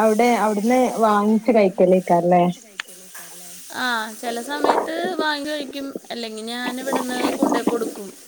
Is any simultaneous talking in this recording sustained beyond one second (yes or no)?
no